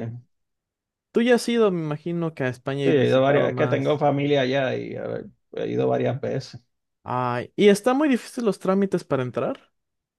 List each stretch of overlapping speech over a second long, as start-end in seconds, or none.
2.8-4.0